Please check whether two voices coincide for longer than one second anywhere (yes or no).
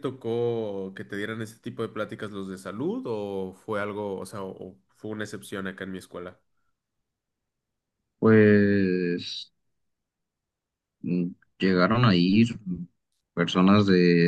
no